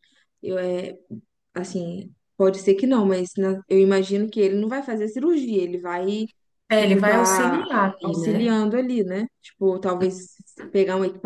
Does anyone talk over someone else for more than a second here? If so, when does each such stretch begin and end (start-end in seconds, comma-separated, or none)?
6.8-8.5